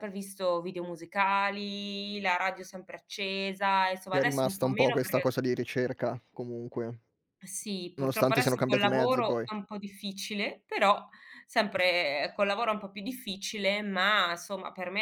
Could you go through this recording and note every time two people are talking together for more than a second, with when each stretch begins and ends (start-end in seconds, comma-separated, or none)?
4.1-5.3, 8.0-9.5